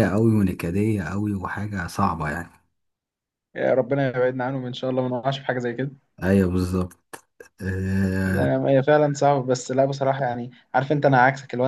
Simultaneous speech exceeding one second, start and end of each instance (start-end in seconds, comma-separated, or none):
none